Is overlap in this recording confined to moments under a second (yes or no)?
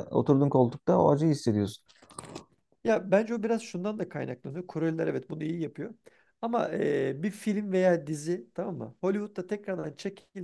yes